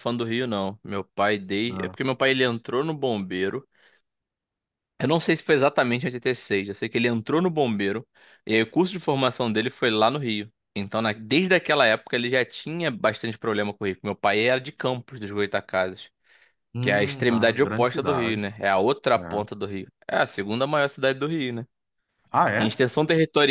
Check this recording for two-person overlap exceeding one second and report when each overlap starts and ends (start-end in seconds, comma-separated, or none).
16.8-18.5